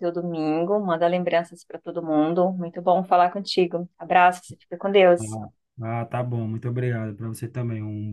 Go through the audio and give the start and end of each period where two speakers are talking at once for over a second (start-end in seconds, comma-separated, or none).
none